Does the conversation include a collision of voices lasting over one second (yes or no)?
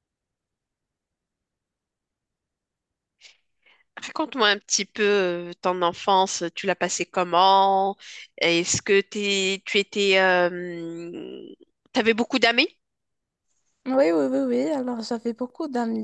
no